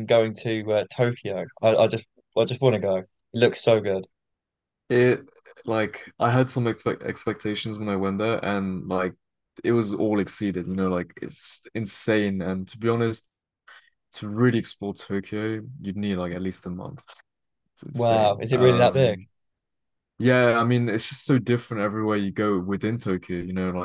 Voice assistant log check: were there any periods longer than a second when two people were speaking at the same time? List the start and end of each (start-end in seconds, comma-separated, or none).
17.9-19.2